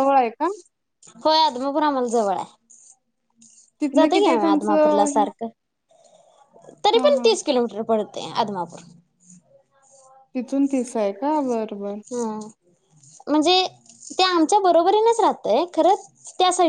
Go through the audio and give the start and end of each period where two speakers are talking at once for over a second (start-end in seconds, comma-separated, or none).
4.0-5.2